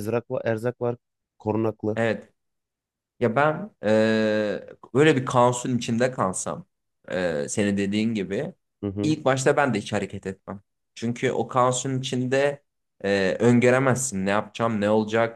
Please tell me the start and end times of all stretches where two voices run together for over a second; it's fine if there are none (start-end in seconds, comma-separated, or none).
none